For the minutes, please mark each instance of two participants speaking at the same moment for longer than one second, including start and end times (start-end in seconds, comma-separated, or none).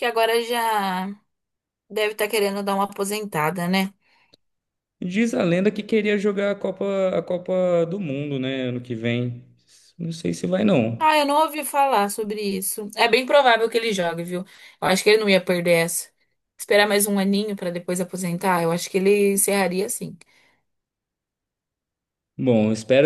none